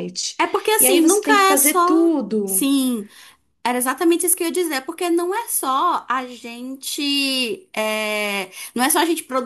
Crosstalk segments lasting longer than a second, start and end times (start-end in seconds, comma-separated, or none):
0.8-2.7